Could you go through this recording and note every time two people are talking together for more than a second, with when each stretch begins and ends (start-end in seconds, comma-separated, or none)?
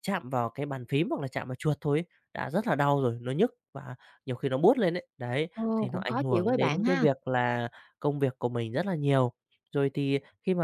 5.5-7.0